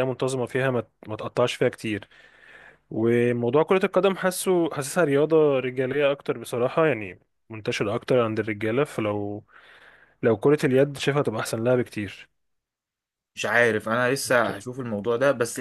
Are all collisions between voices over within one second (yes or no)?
yes